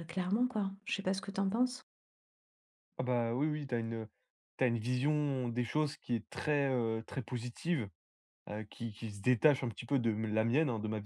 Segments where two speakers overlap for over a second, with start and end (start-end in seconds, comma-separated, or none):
none